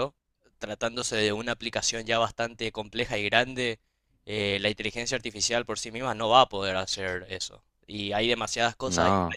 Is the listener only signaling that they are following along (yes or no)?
yes